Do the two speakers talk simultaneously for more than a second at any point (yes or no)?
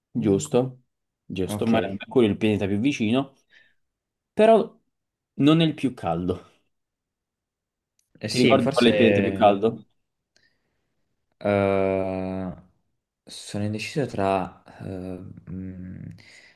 yes